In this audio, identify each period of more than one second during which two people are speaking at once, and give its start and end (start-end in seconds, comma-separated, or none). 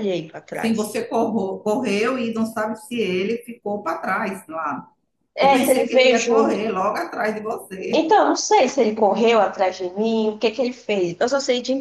5.4-6.6